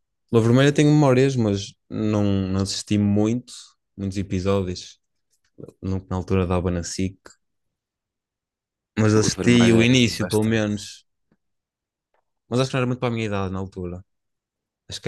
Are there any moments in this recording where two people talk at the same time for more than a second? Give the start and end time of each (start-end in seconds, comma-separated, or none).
9.2-10.7